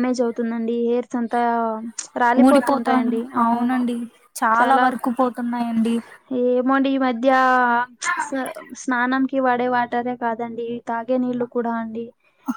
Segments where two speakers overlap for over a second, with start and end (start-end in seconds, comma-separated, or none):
2.5-3.8